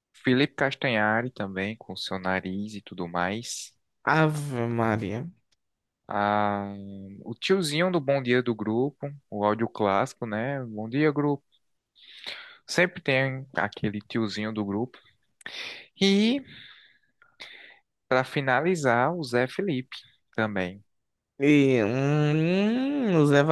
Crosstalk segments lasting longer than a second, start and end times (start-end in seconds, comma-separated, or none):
none